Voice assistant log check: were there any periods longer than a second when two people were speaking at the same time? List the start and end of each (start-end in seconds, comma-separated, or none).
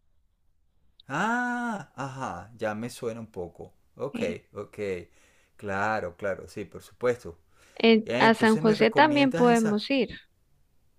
8.1-9.8